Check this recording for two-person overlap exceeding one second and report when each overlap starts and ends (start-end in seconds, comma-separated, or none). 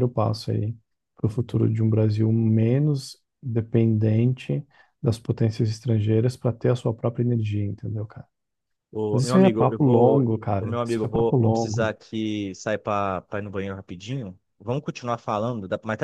9.1-11.9